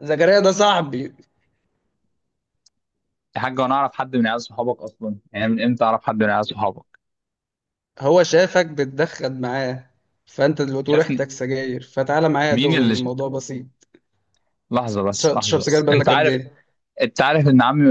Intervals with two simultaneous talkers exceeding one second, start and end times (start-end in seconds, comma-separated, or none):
15.2-16.4